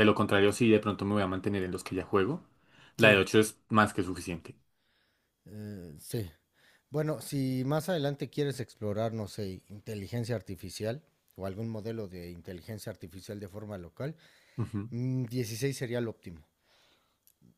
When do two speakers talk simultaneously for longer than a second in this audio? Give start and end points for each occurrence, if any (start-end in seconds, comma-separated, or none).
none